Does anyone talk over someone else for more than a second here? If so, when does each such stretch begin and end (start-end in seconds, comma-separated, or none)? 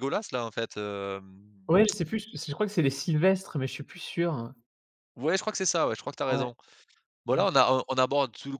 none